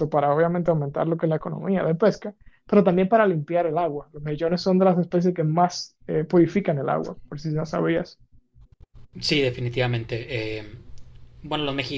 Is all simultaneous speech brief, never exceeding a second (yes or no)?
yes